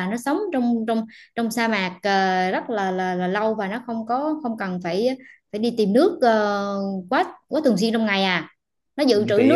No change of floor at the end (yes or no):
no